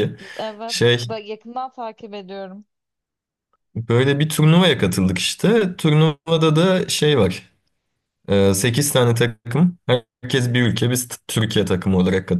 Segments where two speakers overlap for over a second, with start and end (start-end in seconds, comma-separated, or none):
none